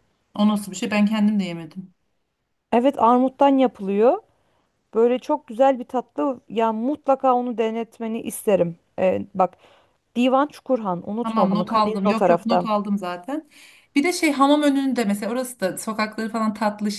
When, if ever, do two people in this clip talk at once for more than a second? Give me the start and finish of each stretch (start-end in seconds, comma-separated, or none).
11.2-12.7